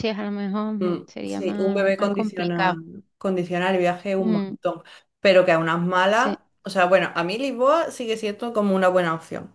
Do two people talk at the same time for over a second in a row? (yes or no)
yes